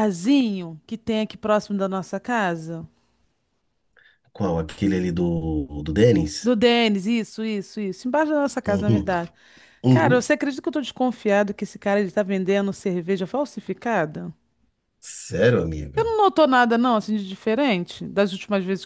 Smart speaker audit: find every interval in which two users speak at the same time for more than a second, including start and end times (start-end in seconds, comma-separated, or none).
none